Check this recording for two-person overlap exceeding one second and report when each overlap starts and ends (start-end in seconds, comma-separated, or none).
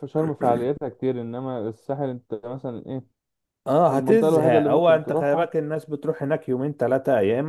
3.9-5.5